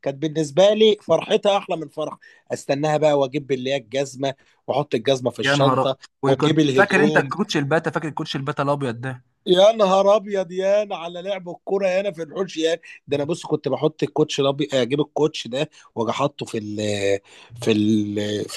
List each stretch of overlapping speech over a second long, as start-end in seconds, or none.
5.4-7.3